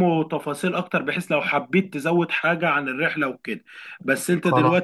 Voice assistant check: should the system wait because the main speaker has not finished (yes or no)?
yes